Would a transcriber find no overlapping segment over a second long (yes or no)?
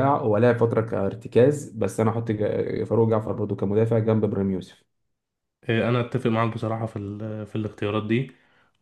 yes